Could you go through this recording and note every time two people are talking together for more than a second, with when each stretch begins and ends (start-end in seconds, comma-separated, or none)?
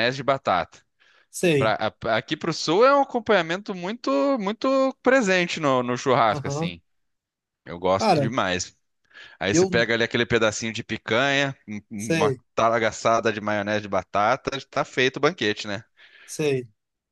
none